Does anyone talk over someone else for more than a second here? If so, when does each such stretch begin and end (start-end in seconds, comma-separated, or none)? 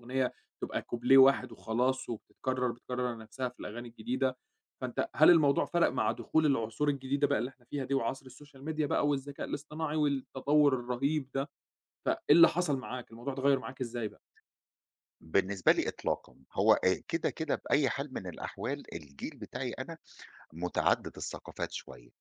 none